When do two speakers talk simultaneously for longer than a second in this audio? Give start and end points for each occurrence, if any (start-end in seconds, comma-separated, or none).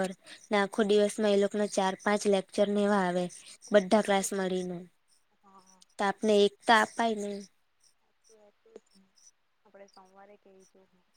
none